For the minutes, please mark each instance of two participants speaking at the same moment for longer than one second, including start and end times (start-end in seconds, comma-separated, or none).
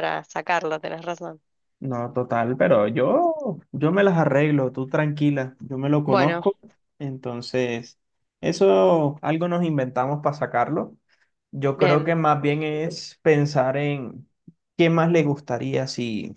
none